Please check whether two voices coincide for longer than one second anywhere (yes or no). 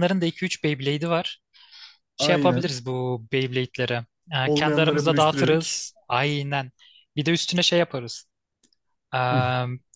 yes